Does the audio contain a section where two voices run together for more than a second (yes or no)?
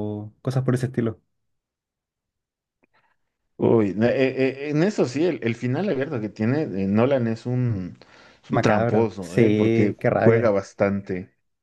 yes